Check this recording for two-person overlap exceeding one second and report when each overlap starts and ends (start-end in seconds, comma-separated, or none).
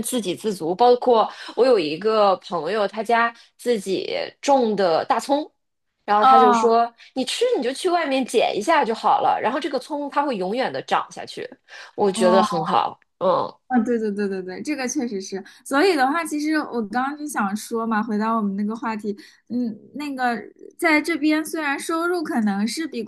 none